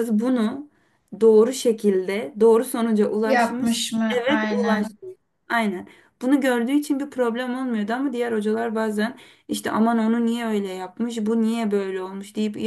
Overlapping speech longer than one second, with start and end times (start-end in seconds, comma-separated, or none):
3.2-5.0